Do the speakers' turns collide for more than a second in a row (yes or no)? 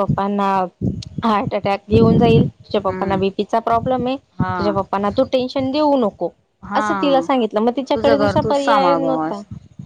yes